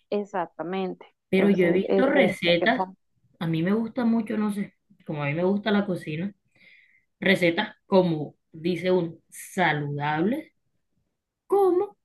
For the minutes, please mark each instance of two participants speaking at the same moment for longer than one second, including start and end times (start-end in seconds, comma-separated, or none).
1.3-2.9